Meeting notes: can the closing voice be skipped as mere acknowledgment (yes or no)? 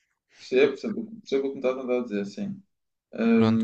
no